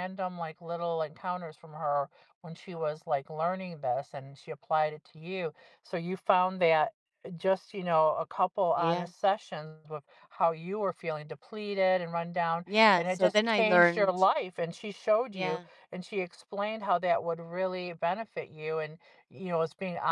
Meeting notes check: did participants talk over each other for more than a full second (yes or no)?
yes